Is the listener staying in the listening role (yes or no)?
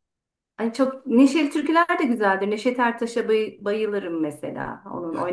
no